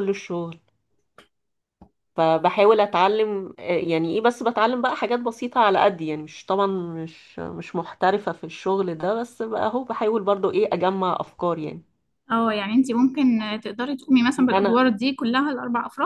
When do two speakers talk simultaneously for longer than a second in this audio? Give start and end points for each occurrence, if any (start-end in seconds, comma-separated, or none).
none